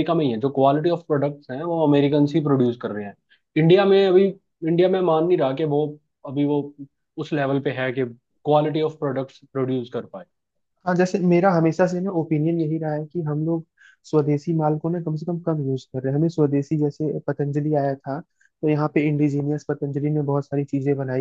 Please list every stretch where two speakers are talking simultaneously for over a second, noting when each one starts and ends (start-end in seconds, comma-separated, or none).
none